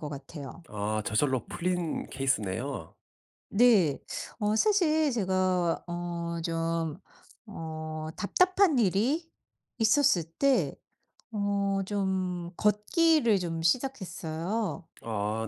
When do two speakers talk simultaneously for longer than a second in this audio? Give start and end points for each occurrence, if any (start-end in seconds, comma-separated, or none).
none